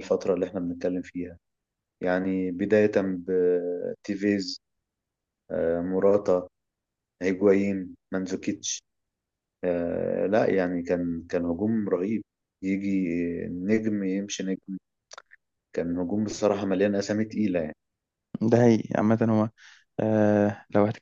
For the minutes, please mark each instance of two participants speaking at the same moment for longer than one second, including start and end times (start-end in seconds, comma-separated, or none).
none